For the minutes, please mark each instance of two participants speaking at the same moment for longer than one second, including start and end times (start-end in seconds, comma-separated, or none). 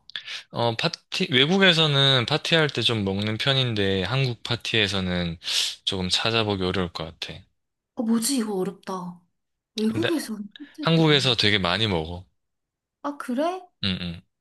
none